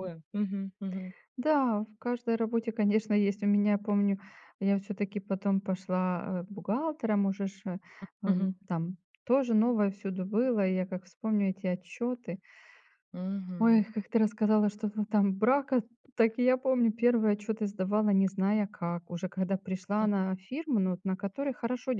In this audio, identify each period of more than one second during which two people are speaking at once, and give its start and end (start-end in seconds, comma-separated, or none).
none